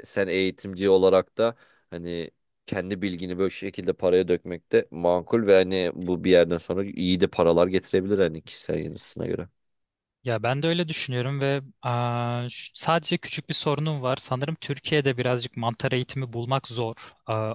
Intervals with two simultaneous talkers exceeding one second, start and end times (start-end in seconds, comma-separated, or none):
none